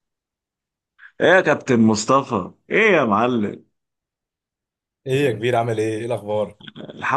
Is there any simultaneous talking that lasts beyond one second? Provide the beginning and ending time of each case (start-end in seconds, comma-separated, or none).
none